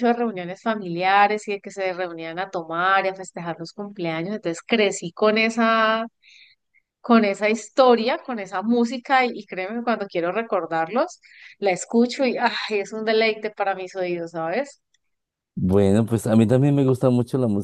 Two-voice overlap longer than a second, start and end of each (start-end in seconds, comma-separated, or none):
none